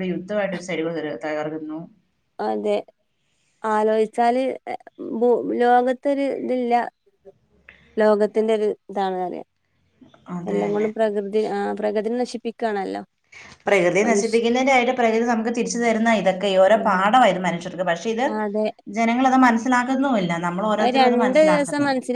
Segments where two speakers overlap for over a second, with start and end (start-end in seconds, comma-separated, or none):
none